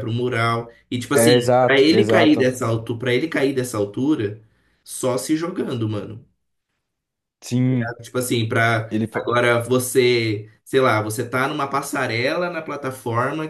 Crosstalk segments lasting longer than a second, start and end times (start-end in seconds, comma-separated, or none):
1.1-2.5